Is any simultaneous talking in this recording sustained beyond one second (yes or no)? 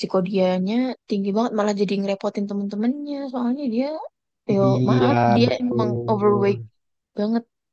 yes